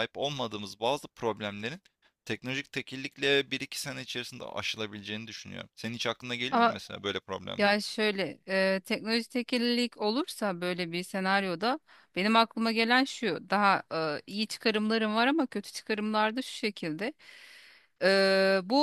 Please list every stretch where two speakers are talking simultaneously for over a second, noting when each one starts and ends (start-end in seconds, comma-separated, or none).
none